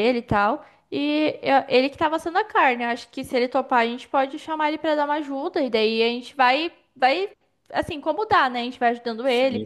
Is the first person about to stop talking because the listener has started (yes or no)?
yes